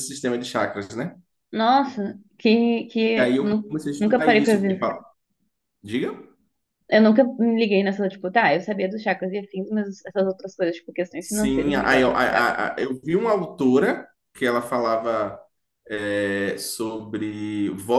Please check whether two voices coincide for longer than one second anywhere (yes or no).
yes